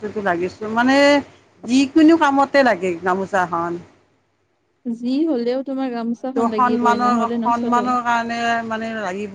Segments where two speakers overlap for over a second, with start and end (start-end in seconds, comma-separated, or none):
6.2-7.8